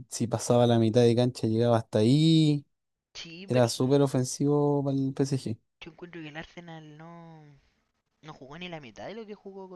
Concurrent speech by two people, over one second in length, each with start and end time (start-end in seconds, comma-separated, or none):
none